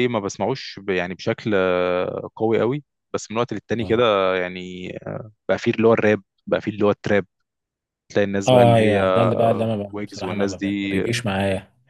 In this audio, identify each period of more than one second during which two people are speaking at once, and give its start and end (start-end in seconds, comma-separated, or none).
8.5-11.0